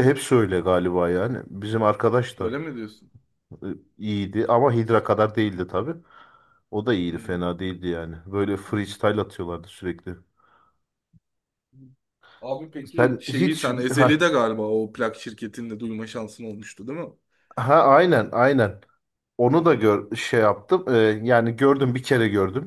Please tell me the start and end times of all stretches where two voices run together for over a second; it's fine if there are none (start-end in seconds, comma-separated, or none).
12.8-14.3